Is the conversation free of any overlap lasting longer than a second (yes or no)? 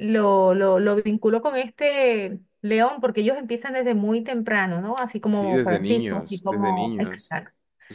no